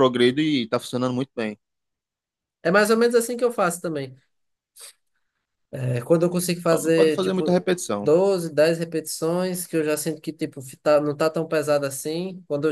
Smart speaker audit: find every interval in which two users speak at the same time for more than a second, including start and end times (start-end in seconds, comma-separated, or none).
6.7-8.1